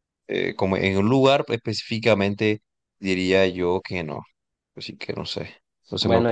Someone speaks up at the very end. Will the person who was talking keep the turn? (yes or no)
no